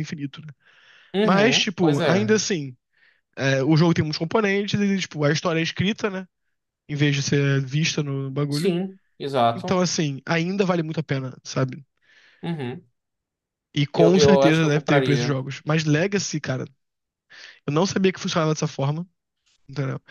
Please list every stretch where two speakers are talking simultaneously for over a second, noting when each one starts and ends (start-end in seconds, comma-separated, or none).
1.2-2.4, 13.9-15.4